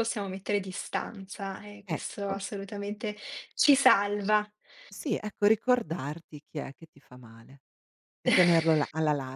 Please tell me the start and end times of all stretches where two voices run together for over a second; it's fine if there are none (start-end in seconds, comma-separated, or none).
none